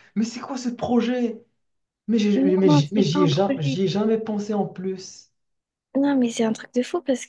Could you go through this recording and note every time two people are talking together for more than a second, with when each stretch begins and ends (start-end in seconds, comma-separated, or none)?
2.3-3.8